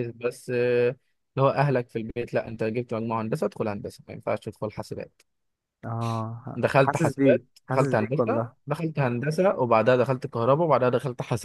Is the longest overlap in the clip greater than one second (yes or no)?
yes